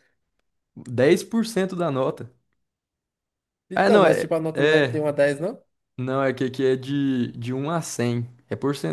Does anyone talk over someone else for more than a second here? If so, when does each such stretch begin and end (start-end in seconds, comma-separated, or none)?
3.8-5.0